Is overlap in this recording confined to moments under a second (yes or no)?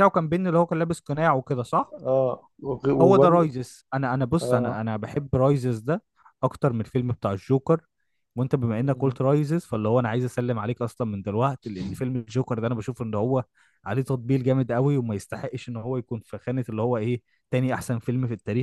yes